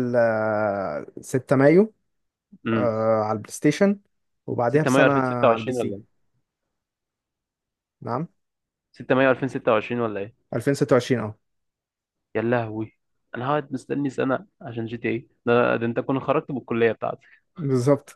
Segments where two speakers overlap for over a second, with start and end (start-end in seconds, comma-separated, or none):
4.7-5.9